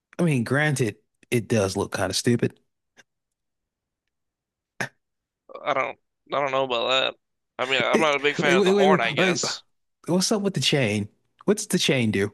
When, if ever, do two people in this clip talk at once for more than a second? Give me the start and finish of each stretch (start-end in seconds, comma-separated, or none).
7.9-9.4